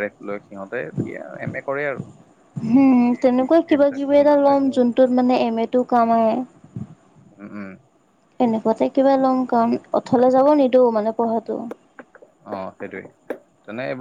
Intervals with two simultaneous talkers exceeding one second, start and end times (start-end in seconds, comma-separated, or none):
3.1-4.8